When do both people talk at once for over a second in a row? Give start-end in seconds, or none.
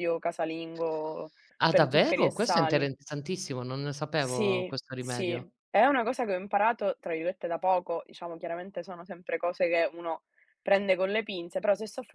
1.7-2.9, 4.1-5.5